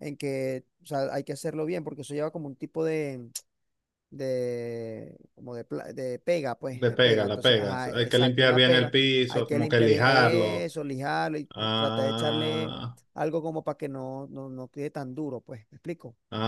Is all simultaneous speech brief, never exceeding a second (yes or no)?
no